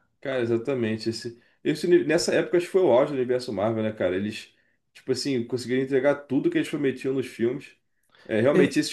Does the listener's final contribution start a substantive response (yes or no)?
no